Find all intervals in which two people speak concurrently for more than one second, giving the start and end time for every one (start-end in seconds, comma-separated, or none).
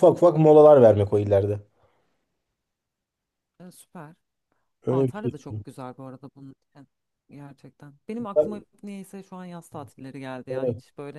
none